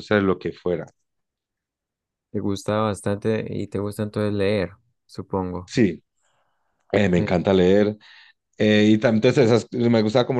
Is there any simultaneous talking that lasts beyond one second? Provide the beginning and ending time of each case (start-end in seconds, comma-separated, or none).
none